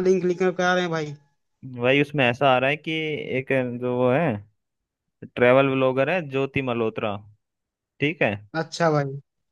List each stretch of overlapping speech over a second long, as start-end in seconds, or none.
none